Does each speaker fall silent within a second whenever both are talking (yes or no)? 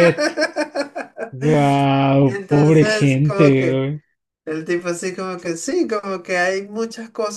no